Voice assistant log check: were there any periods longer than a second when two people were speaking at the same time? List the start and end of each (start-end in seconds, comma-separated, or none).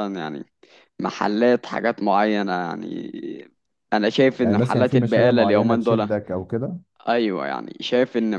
4.4-6.1